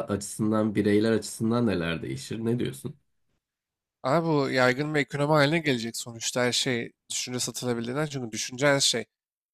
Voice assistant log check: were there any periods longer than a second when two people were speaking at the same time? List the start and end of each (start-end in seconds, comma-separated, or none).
none